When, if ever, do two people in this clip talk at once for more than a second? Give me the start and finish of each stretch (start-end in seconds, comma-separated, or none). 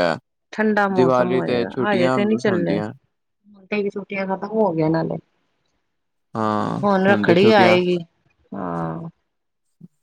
0.9-2.8